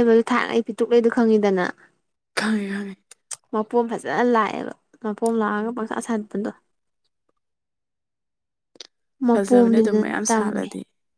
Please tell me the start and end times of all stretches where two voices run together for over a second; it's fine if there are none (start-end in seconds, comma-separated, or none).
9.3-10.7